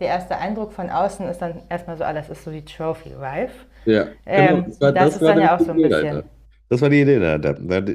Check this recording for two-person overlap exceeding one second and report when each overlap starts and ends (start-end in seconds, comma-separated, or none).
4.3-6.2